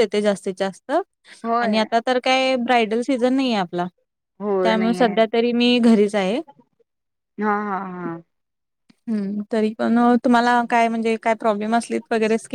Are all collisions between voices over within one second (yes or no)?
yes